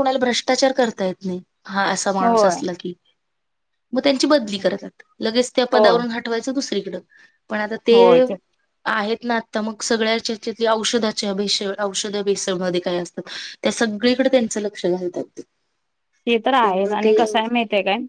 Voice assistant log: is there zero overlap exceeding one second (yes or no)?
yes